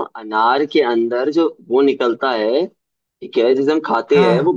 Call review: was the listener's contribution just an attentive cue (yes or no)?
yes